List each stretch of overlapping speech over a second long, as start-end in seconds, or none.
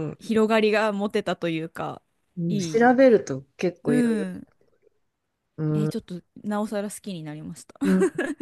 none